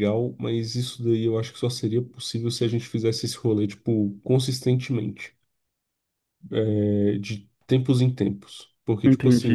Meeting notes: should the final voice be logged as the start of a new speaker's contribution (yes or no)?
yes